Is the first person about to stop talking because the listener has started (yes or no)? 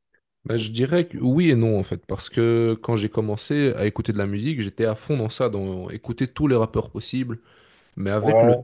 no